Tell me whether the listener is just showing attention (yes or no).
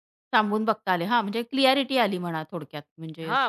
no